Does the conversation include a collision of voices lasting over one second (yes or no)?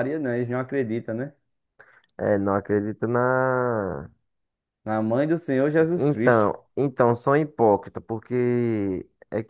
no